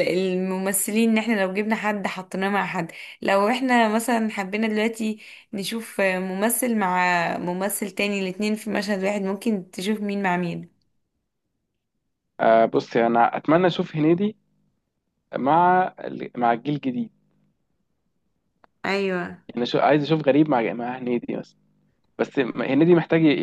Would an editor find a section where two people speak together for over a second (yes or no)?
no